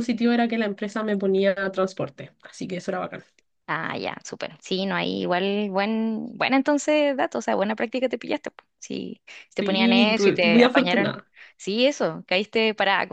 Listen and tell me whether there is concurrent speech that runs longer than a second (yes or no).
yes